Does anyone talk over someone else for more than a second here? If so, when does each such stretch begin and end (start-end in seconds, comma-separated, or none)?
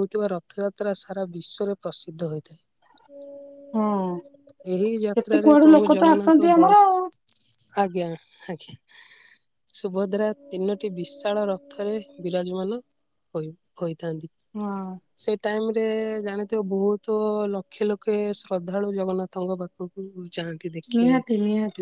5.1-6.7